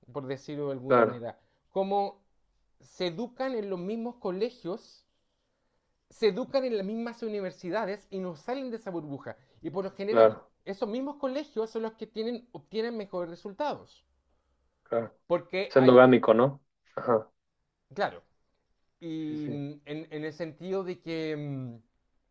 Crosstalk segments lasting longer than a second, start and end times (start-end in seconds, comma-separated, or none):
none